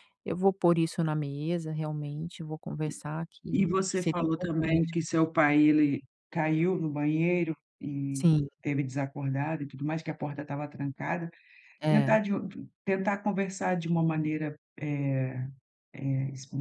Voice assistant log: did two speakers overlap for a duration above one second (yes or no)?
yes